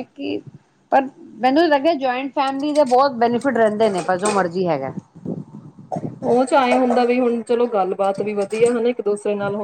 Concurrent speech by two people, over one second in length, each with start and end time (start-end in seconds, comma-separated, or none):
none